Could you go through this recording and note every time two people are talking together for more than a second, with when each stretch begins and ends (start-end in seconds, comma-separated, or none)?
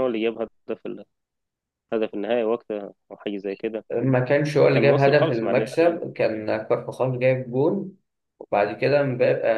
4.6-6.0